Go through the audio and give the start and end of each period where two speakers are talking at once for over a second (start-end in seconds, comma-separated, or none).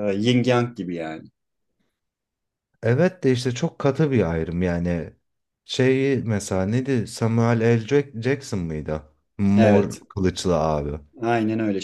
none